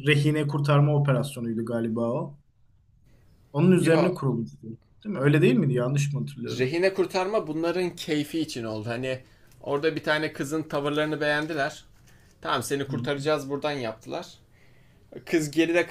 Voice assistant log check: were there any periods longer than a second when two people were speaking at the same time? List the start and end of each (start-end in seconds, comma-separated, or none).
none